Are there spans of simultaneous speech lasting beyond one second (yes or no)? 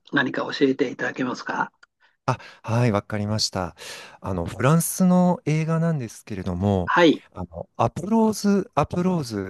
no